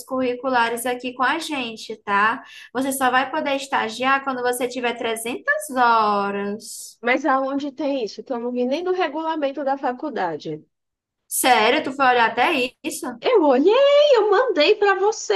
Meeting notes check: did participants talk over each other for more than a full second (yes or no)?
no